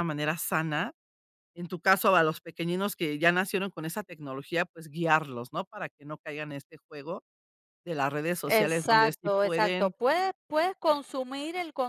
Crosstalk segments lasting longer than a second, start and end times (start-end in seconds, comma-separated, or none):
8.5-9.9